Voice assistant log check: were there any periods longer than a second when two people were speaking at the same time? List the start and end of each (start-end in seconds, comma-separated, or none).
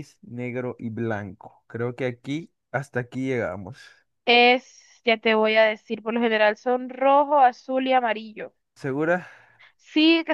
none